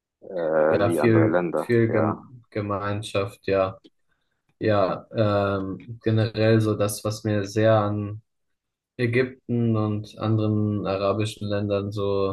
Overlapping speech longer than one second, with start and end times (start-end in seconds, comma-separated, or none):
0.7-2.2